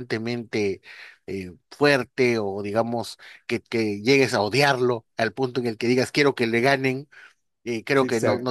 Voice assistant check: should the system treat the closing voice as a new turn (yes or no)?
no